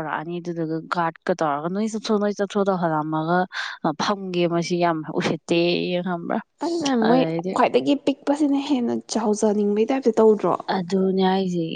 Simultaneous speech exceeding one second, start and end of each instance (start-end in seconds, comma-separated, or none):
none